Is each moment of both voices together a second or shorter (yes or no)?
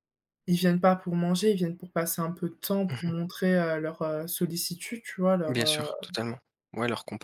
yes